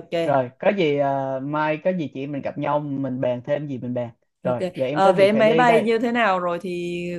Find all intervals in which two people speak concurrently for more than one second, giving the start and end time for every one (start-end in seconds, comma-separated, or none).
4.5-5.9